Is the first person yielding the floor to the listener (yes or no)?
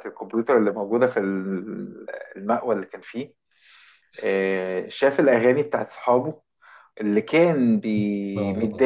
no